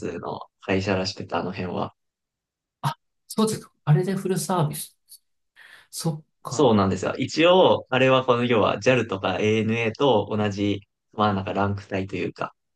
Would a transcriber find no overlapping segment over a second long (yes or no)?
yes